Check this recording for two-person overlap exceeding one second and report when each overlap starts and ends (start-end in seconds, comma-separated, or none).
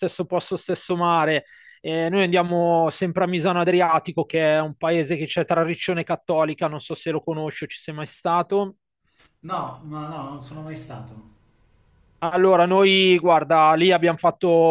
none